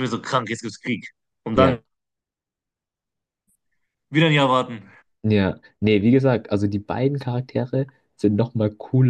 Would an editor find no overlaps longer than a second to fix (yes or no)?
yes